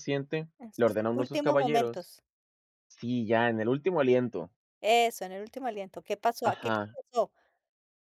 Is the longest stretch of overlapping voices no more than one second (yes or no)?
no